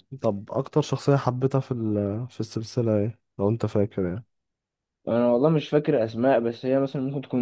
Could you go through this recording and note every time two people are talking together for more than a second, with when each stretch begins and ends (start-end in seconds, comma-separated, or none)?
none